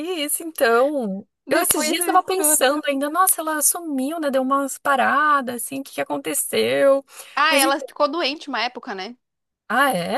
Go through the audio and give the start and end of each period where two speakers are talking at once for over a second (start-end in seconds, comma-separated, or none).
1.5-2.7